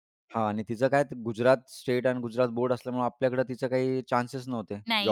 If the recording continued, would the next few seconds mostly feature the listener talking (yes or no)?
yes